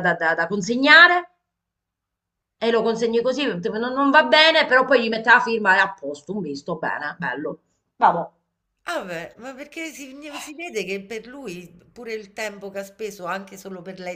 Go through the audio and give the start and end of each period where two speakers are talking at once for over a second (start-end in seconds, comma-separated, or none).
none